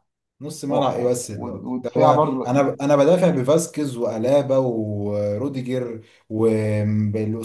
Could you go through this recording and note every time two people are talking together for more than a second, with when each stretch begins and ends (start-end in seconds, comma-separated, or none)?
0.7-2.5